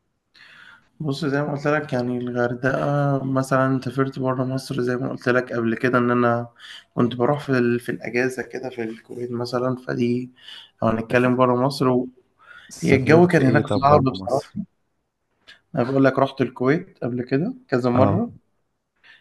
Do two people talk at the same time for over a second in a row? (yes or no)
yes